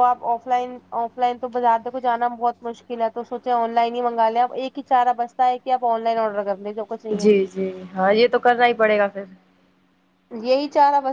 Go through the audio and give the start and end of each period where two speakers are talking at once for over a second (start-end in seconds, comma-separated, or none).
none